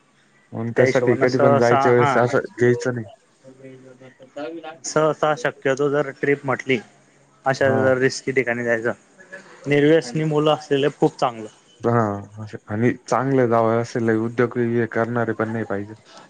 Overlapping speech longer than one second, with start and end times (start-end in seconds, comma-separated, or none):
0.8-2.1